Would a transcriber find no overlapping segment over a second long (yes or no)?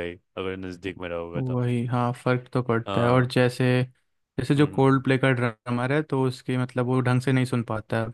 yes